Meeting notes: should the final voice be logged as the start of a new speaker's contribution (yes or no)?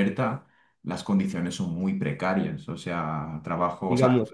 no